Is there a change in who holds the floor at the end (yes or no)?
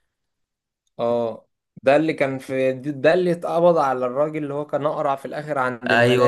yes